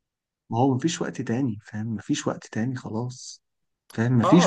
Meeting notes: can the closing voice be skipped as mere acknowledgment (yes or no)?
no